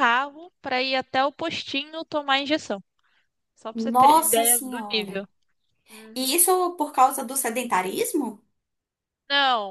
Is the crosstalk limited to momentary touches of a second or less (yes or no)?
no